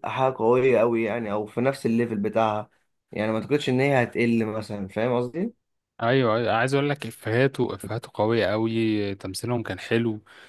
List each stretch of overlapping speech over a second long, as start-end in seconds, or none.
none